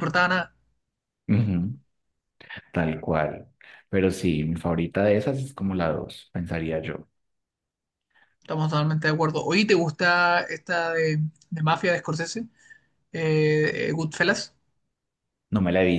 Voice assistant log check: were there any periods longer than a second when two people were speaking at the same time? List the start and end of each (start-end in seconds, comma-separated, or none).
none